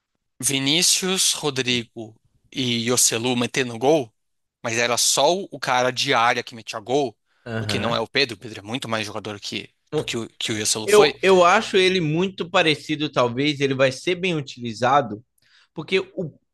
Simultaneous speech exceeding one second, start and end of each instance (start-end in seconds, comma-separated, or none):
none